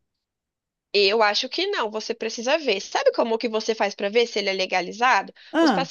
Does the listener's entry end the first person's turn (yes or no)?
no